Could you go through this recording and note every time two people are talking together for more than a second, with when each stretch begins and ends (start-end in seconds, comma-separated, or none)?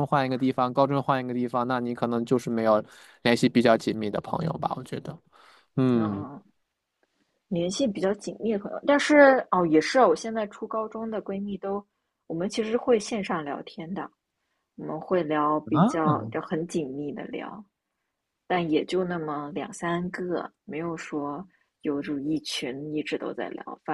none